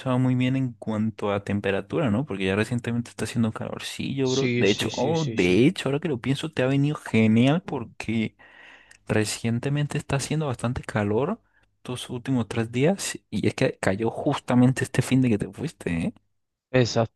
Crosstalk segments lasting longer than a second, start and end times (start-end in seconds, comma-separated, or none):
4.3-5.5